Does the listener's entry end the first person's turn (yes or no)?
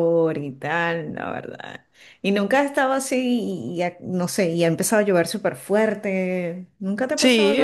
yes